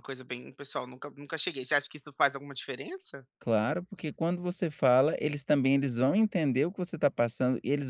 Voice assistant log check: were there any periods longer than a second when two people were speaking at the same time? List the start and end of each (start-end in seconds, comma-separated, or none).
none